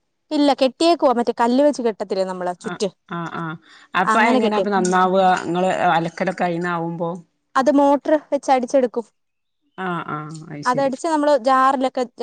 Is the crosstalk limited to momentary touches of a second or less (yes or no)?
yes